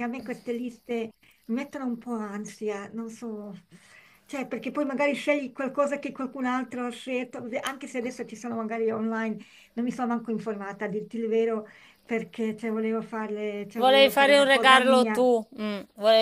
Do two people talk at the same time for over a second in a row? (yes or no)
yes